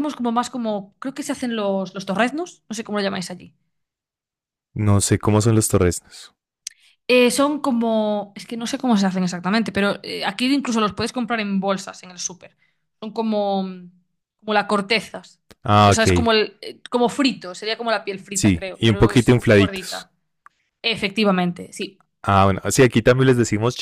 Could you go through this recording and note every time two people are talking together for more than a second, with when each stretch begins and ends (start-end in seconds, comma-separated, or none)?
18.3-20.1